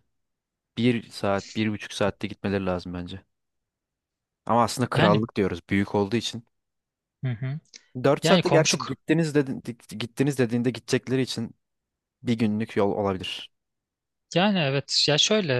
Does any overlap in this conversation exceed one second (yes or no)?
no